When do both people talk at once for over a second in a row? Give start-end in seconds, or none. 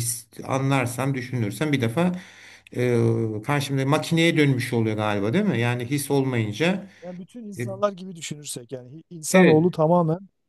none